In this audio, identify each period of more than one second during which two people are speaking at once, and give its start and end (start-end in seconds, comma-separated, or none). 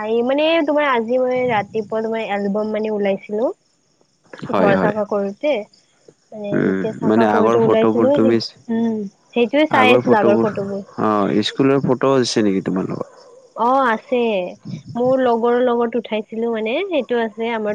6.6-8.3